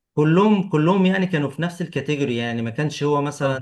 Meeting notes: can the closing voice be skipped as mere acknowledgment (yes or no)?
yes